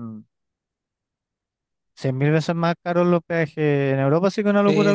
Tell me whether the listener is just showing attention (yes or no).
no